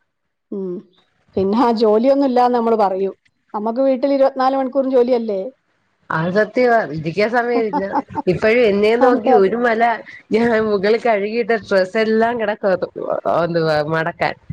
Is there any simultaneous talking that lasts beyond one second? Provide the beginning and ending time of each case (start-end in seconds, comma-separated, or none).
none